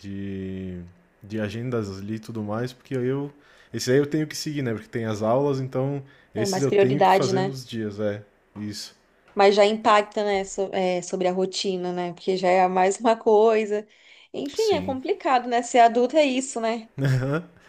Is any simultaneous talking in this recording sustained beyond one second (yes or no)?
yes